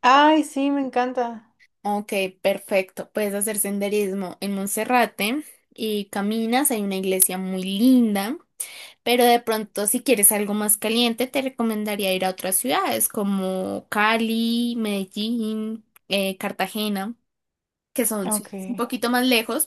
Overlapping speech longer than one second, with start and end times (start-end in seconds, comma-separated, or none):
none